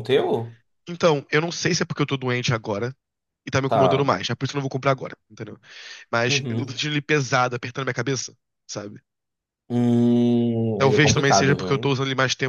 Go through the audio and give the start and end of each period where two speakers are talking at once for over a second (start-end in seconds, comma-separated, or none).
10.8-12.0